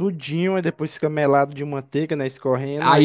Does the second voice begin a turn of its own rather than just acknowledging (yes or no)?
yes